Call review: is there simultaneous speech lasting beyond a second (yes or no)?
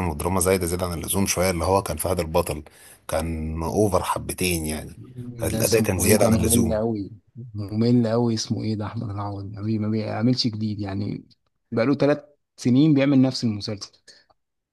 yes